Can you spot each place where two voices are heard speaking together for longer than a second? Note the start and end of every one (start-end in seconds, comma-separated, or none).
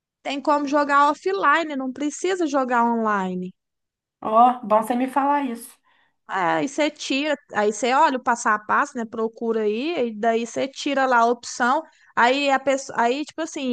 none